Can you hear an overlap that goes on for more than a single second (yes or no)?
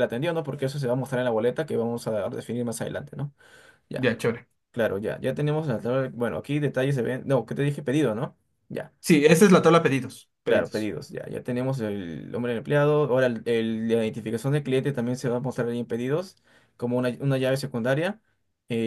no